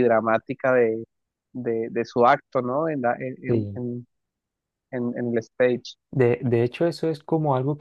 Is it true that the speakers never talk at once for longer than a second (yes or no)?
yes